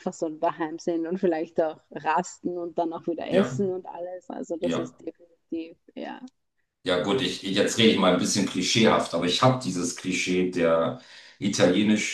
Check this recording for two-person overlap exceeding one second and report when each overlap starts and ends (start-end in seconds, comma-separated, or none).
none